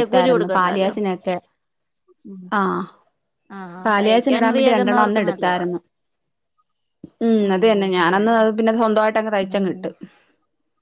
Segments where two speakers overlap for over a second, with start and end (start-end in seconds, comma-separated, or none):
3.9-5.6